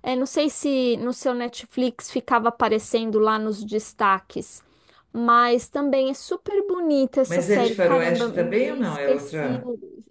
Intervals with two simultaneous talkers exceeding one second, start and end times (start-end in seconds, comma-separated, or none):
7.2-9.6